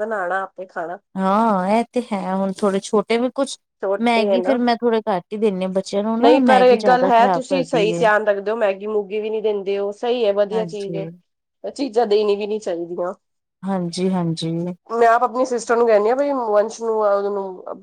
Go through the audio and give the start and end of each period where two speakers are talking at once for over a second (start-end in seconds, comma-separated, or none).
6.2-8.0